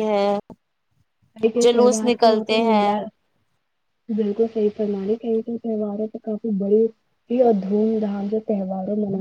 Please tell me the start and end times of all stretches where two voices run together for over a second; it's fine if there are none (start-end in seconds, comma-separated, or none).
none